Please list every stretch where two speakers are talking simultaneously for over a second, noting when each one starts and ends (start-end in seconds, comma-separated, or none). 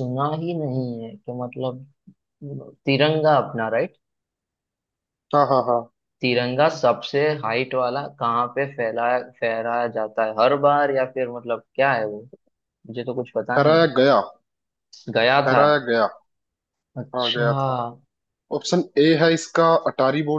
none